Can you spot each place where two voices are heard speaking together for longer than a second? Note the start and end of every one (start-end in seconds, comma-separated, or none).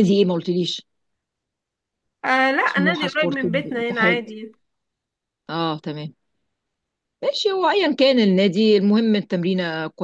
2.6-4.3